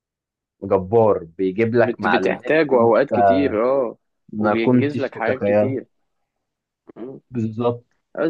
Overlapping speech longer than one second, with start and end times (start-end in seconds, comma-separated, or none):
1.7-3.1, 4.4-5.8